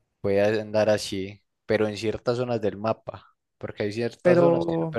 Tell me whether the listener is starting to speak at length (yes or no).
no